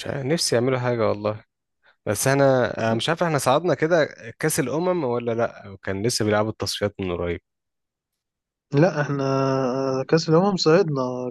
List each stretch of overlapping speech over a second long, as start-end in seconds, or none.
none